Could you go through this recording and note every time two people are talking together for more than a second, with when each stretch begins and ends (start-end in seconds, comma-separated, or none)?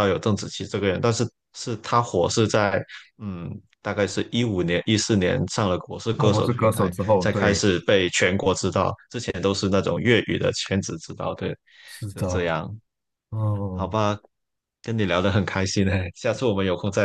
6.2-7.6